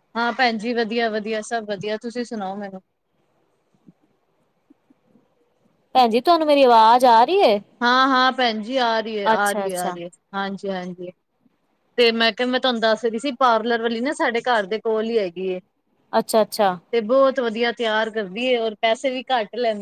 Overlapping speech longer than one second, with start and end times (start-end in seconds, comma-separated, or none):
none